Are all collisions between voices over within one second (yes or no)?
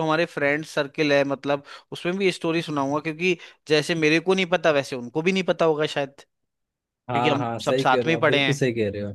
no